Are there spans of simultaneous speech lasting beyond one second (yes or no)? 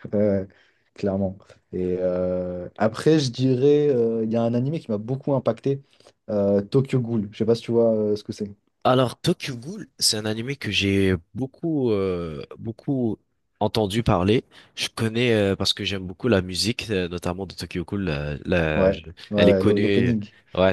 yes